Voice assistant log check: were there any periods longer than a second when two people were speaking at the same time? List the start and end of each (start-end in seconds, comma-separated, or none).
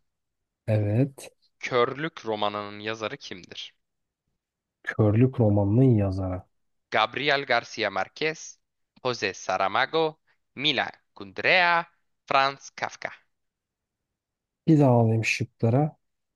none